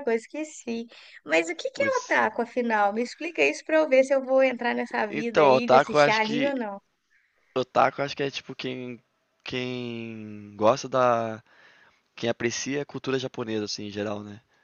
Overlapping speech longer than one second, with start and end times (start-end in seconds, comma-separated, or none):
5.1-6.5